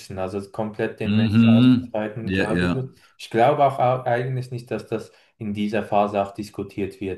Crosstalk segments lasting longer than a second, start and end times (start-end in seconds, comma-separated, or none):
1.0-2.7